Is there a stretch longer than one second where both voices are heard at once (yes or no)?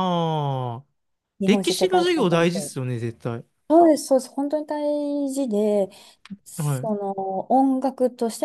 yes